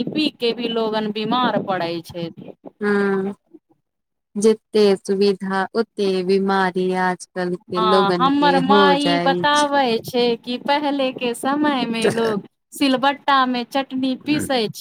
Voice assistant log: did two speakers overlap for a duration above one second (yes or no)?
no